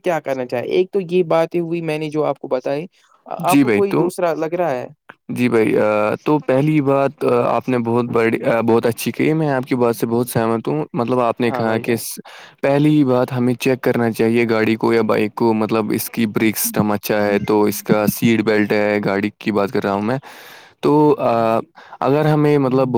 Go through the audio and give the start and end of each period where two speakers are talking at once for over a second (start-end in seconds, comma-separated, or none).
none